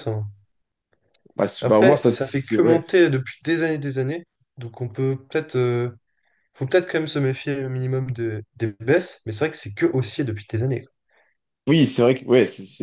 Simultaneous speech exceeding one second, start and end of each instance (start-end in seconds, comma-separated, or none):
1.6-2.8